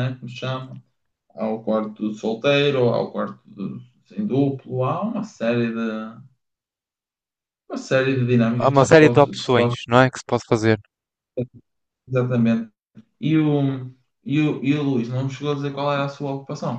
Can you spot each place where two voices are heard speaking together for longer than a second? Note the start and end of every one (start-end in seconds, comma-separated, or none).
8.6-9.8